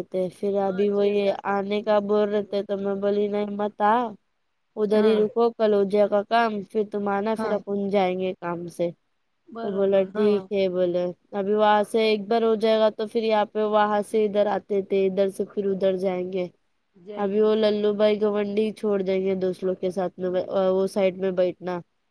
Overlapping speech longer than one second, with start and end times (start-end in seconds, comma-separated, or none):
0.7-2.4